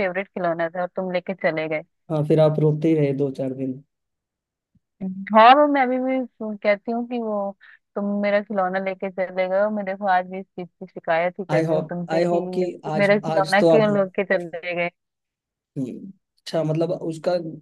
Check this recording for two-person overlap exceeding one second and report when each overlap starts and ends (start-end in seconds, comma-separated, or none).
11.5-13.9